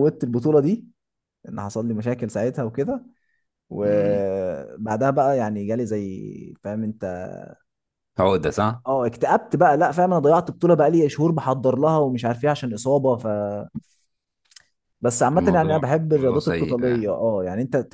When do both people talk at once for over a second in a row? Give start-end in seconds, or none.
15.3-17.1